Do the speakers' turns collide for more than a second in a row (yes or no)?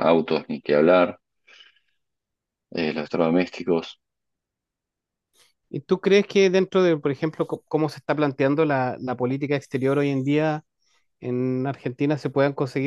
no